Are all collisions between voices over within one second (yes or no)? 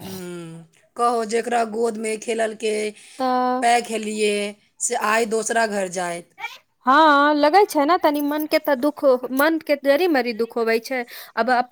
yes